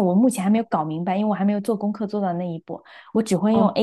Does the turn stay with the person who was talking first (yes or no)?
yes